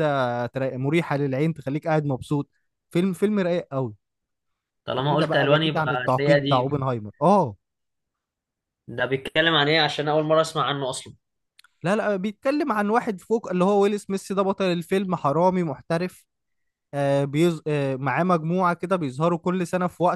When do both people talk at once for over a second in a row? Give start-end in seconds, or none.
5.0-6.7